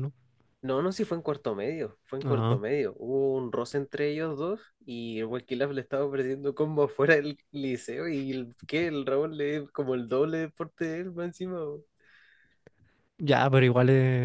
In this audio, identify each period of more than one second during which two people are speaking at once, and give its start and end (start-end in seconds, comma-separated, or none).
none